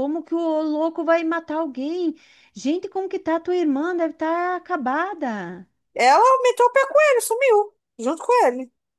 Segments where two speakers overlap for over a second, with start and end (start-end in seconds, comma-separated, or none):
none